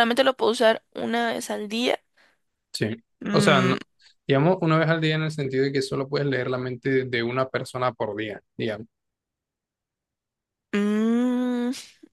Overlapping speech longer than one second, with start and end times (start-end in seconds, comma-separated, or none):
none